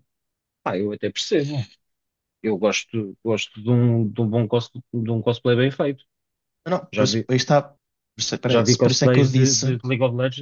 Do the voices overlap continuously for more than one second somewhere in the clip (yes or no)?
yes